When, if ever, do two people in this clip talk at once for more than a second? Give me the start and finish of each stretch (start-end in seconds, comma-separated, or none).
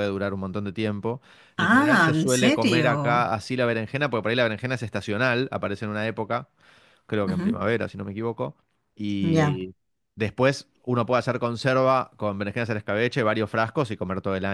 1.6-3.3